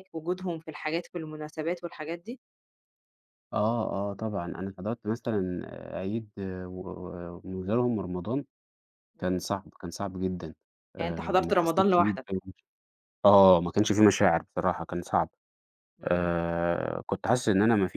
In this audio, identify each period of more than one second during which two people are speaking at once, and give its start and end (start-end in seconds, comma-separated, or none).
11.0-12.3